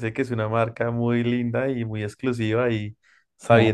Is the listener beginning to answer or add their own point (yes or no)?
no